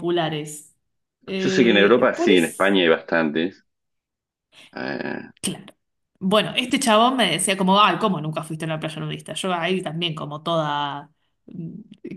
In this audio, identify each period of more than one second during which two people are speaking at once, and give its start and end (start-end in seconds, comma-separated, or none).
1.4-2.8